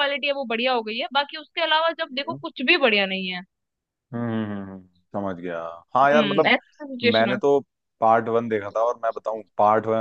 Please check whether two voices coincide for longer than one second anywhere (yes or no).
no